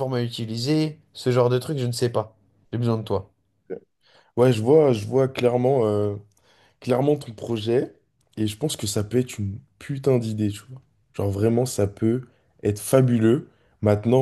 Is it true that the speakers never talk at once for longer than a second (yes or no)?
yes